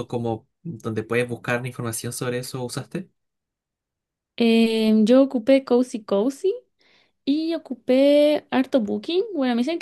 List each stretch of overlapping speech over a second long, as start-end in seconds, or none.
none